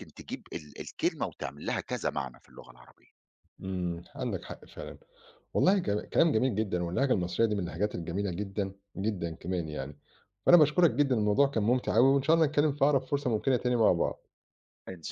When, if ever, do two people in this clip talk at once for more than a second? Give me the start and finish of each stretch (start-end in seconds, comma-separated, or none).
none